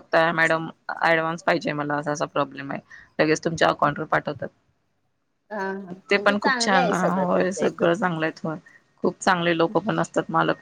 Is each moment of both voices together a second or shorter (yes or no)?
no